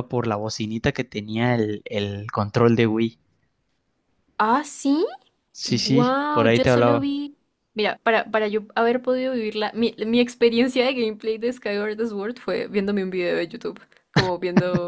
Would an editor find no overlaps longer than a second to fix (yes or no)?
no